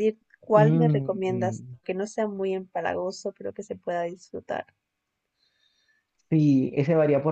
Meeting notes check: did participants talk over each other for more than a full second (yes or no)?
yes